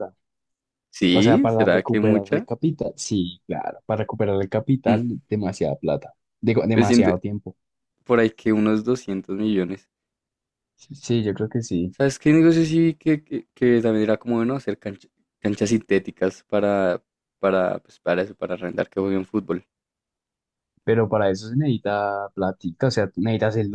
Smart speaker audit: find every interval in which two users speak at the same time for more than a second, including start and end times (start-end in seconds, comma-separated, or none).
1.1-2.5